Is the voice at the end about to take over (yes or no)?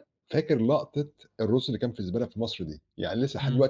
no